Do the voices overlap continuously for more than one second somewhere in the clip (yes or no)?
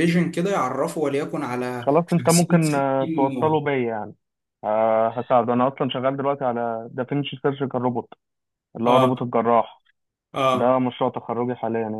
yes